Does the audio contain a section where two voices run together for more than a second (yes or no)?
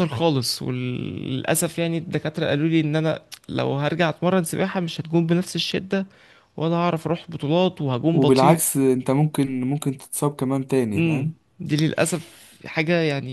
no